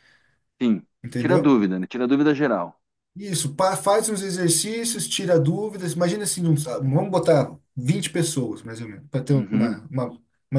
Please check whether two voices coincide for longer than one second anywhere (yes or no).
no